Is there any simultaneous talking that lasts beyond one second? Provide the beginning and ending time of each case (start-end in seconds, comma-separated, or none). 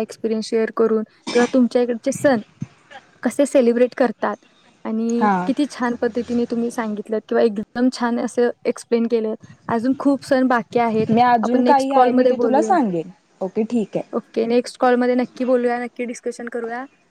11.4-12.7